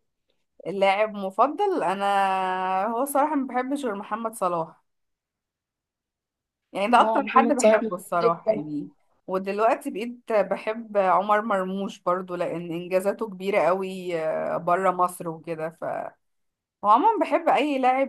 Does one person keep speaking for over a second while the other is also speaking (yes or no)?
yes